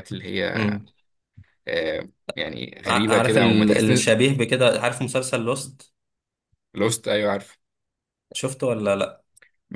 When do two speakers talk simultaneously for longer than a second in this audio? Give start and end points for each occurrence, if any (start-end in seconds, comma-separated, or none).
2.9-4.2